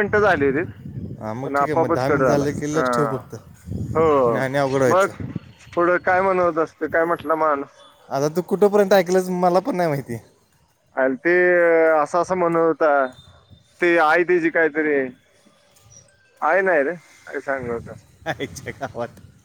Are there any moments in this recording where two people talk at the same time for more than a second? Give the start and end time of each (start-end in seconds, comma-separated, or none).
none